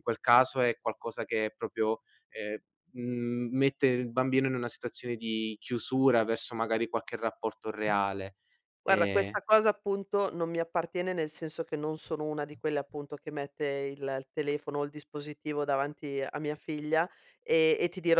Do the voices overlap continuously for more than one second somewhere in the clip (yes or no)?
no